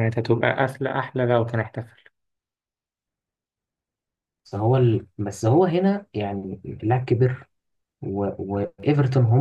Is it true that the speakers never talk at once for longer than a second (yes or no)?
yes